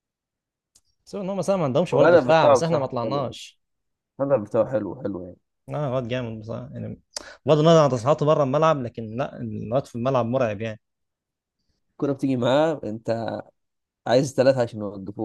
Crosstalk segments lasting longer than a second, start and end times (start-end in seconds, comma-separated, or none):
1.9-3.4